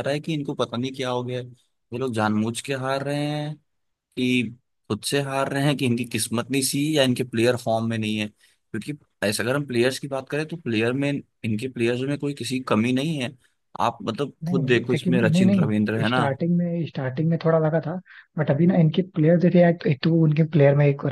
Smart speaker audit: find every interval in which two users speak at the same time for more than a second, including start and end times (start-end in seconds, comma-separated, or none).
14.4-16.2